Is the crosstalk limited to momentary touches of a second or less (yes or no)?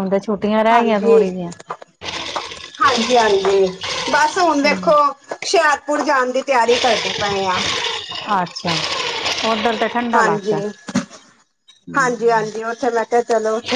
yes